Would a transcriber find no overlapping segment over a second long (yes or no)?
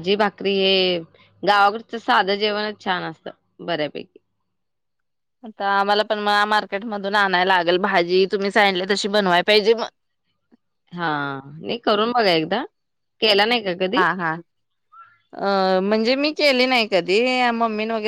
yes